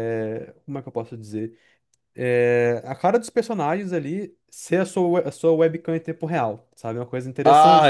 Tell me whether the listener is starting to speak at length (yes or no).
yes